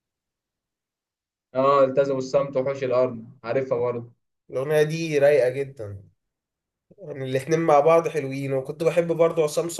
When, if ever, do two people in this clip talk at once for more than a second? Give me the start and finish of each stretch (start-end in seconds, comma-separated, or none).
none